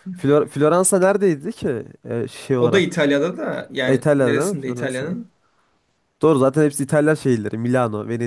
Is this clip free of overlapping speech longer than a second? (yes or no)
no